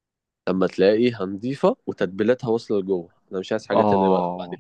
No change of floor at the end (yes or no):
no